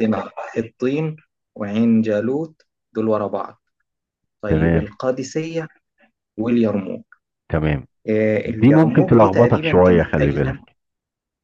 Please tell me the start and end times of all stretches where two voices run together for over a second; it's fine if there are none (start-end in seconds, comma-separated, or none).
8.4-10.6